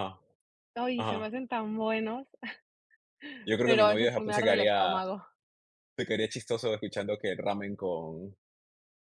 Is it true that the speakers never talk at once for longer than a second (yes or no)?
no